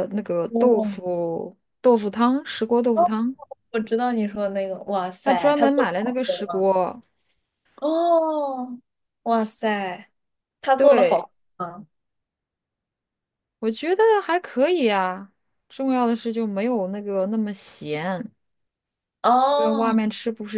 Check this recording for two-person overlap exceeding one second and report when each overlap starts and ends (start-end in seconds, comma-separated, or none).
5.2-6.7